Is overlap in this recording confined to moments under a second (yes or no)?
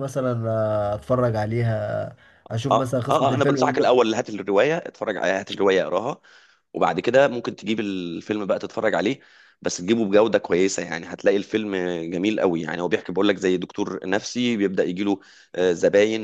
no